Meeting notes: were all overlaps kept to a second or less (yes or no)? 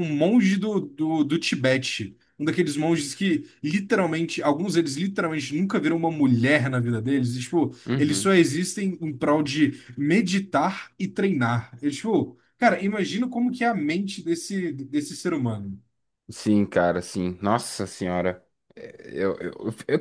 yes